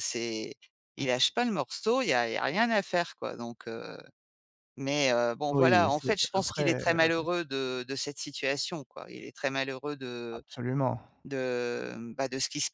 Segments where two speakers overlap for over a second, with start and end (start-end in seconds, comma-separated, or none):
5.5-7.1